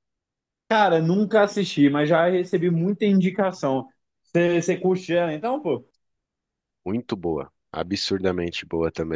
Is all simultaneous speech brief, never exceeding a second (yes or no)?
yes